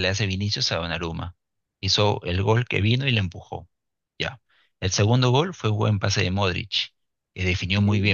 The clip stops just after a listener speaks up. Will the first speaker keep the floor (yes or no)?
yes